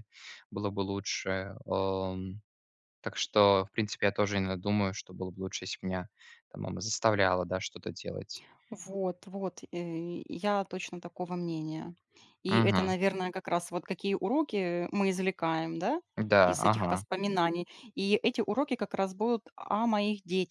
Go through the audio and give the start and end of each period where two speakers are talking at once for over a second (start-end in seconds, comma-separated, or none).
none